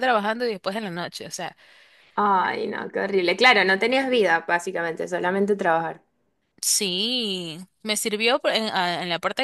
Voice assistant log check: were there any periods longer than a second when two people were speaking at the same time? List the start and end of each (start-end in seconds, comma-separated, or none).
none